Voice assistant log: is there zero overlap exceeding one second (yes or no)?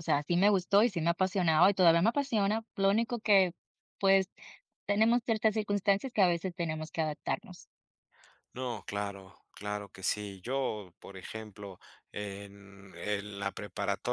yes